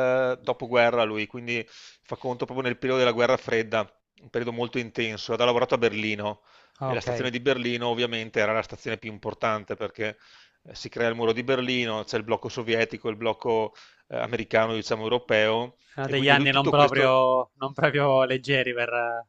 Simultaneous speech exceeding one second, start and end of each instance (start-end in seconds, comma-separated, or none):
15.8-17.2